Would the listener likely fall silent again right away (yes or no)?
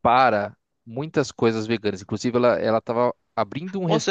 no